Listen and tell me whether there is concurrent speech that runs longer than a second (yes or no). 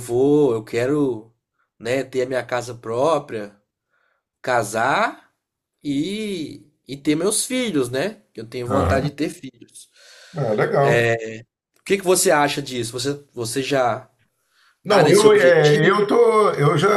yes